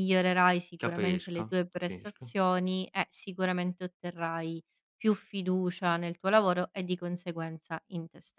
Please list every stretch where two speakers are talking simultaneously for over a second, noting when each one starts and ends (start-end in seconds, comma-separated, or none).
0.8-2.4